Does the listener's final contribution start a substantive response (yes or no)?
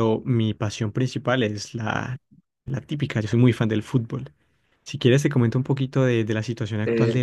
yes